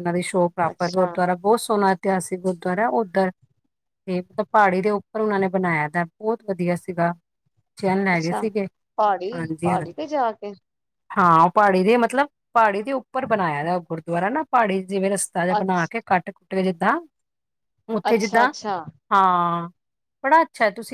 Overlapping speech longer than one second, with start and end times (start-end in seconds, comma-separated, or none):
none